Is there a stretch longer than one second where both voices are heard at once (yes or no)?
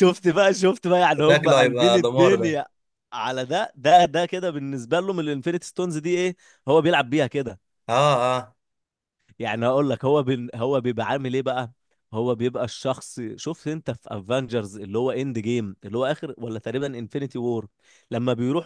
yes